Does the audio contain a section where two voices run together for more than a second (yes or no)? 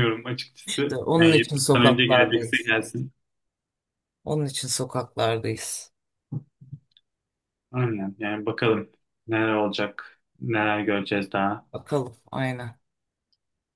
yes